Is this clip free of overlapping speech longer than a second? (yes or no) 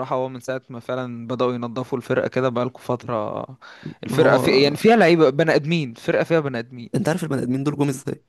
yes